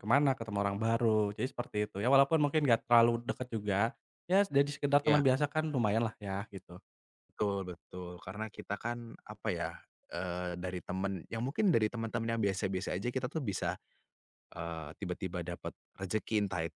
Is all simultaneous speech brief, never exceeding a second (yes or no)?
yes